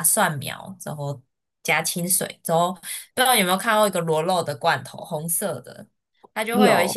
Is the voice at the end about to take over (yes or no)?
no